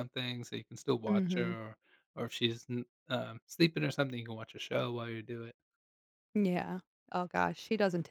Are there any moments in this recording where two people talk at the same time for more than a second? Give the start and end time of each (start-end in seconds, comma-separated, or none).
none